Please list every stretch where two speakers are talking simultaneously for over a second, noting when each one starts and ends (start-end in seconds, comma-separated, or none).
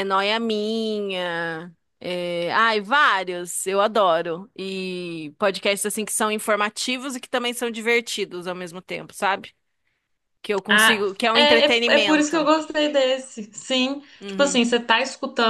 10.7-12.4